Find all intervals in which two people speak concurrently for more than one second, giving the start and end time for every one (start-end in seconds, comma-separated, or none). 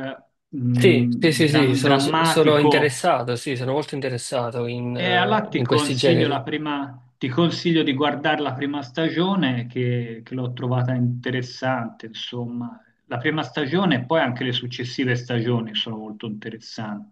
0.7-2.9, 5.0-6.4